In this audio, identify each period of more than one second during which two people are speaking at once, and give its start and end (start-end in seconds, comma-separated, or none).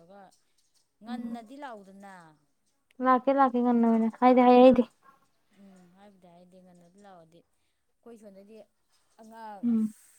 none